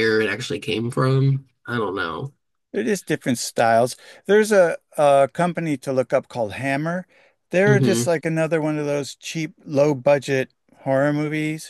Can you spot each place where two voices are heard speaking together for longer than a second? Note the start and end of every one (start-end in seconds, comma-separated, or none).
none